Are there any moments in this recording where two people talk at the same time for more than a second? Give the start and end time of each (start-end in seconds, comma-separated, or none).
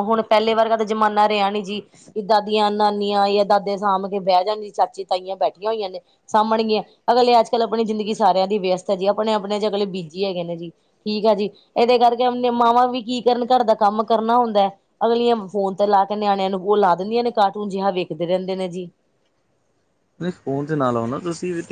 none